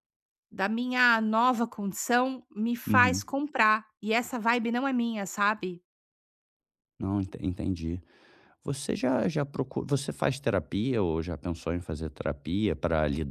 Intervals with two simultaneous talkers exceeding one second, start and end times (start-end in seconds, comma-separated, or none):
none